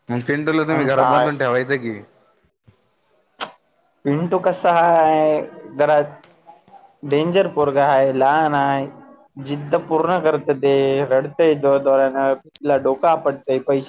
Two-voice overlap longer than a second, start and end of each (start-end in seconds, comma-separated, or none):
none